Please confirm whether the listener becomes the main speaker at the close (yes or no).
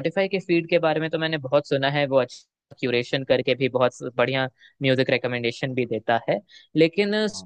no